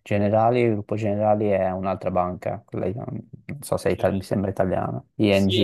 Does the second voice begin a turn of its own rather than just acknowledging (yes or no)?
yes